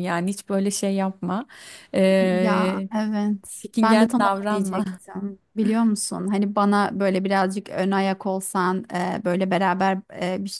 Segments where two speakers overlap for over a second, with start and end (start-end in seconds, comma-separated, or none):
3.5-5.0